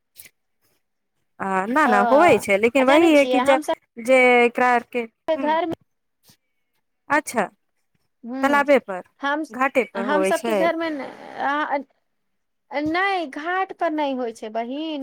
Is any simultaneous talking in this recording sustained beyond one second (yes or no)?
yes